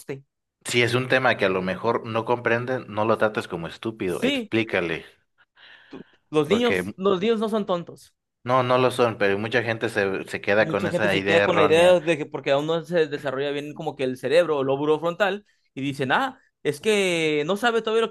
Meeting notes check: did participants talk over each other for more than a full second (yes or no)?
yes